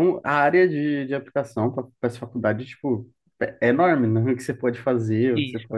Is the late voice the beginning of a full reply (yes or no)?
yes